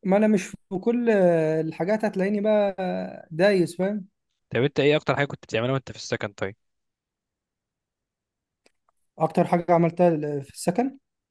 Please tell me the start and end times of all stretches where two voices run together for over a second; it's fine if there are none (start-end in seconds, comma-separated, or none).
none